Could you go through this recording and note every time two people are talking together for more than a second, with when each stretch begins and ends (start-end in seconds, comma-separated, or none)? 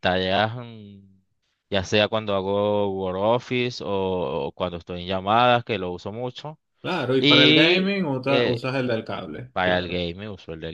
7.2-8.6